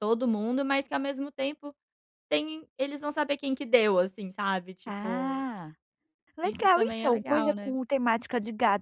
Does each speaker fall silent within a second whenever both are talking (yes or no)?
no